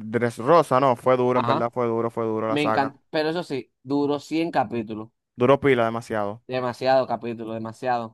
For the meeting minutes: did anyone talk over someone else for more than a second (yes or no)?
no